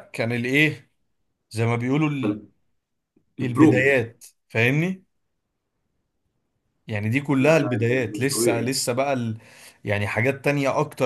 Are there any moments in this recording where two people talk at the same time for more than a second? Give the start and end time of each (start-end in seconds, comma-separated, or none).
7.4-8.8